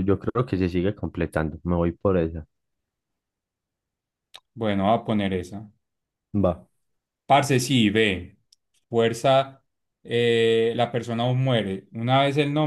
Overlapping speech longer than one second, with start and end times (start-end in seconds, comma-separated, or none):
none